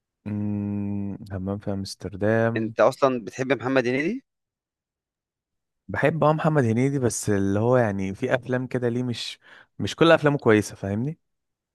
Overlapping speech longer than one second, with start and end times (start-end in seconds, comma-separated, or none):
none